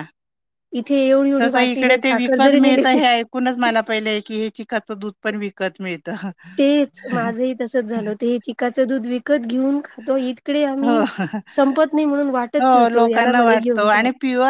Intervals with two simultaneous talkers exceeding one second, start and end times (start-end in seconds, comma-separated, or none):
1.4-3.0